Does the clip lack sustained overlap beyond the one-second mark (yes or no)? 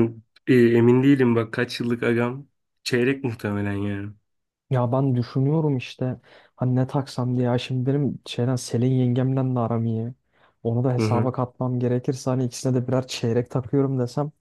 yes